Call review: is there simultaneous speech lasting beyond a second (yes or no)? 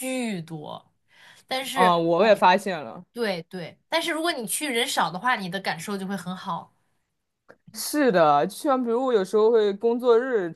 no